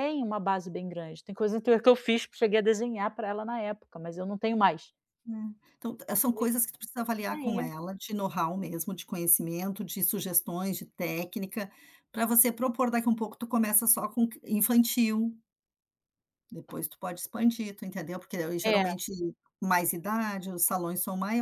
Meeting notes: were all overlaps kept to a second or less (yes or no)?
yes